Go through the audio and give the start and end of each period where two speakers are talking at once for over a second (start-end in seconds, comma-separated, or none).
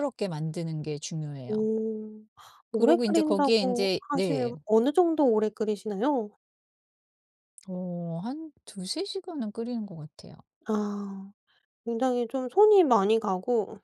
2.7-4.5